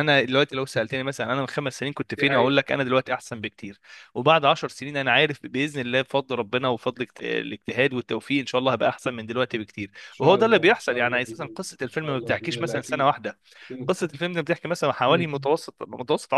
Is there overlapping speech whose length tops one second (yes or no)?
yes